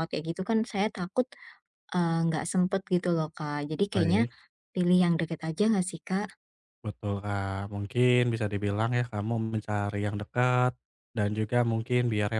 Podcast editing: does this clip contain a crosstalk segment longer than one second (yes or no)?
no